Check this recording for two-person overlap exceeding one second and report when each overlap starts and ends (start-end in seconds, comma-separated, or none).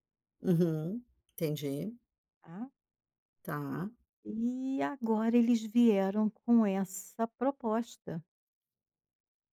none